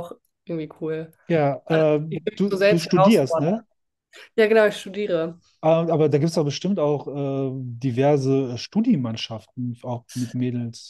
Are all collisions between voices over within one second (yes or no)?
no